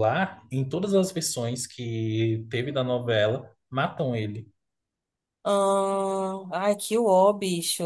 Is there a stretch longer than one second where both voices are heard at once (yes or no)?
no